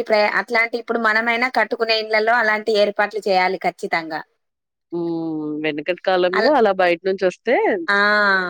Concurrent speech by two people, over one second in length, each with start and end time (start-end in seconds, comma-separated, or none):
none